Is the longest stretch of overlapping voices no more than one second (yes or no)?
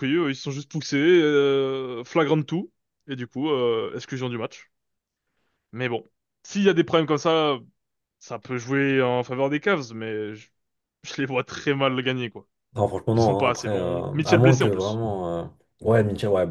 no